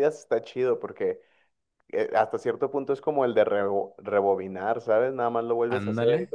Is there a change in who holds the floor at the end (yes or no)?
no